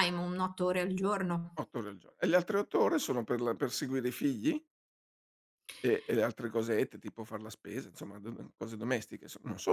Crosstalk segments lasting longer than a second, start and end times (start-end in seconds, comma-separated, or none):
none